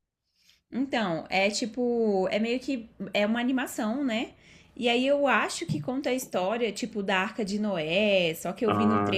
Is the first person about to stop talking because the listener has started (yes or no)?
no